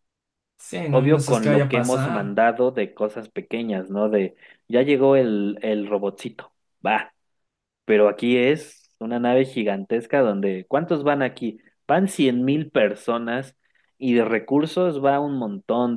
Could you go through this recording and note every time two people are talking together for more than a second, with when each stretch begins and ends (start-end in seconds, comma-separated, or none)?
0.9-2.4